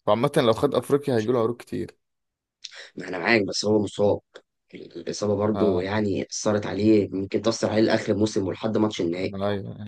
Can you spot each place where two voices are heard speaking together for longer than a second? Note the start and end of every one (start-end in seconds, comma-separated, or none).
none